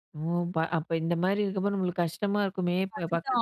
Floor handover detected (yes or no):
yes